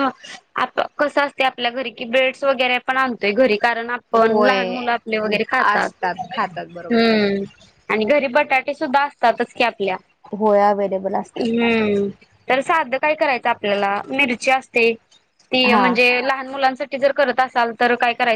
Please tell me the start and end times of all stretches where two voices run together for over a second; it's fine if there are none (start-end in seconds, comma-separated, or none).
5.7-7.1